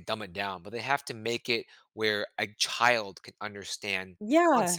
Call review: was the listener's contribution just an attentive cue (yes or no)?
no